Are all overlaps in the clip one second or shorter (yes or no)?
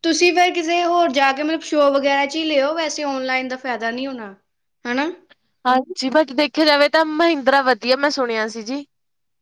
yes